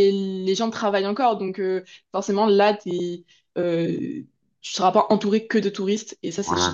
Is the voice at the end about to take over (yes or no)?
yes